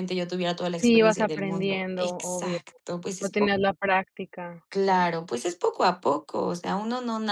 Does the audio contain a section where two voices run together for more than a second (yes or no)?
yes